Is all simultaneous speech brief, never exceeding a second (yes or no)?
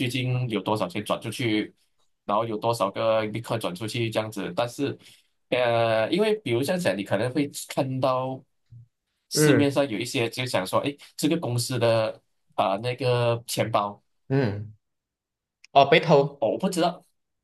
yes